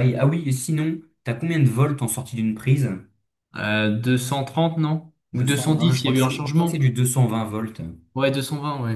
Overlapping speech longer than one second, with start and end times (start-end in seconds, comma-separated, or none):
5.3-6.8